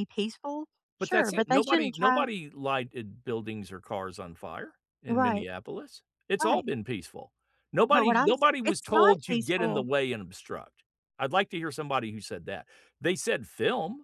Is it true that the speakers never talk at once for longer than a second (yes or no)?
no